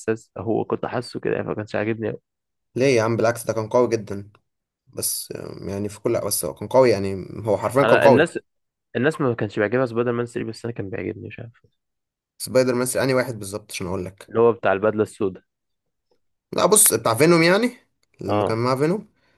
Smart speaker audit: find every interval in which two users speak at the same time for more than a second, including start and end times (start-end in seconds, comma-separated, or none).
none